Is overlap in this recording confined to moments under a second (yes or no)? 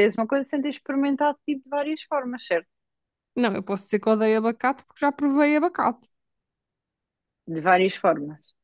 yes